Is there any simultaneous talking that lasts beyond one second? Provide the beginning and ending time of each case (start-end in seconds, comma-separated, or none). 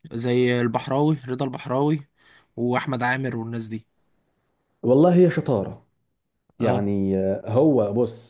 none